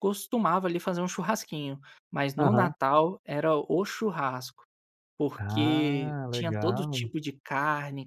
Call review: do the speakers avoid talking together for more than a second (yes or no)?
no